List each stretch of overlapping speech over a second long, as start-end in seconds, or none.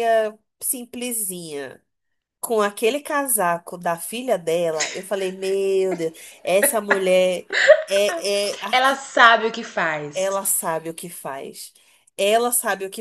none